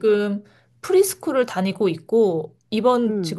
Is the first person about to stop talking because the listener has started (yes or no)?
no